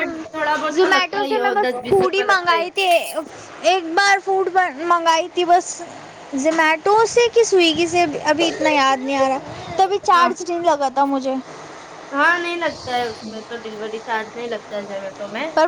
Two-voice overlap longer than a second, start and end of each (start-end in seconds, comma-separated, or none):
0.7-2.7